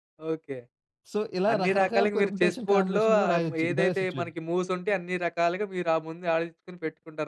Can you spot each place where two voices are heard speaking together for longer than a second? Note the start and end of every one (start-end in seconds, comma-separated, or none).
1.5-4.3